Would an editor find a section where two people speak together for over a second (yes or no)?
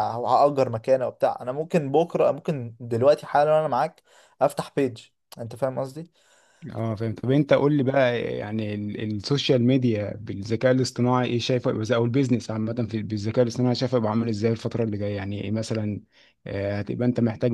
no